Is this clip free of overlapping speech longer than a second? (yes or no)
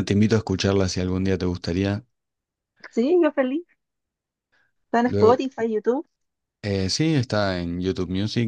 yes